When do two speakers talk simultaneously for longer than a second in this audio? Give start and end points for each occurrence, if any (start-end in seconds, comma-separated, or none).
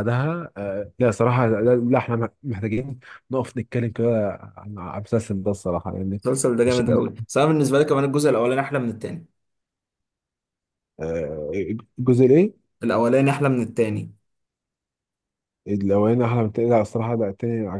none